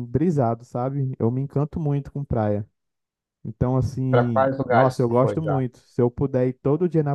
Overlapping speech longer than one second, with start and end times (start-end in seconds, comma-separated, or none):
4.1-5.6